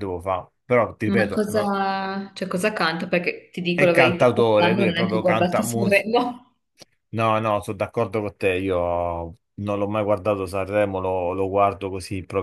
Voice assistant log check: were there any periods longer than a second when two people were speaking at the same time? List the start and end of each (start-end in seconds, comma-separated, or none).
3.7-5.6